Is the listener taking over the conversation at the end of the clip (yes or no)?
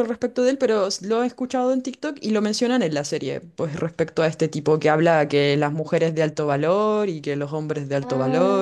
no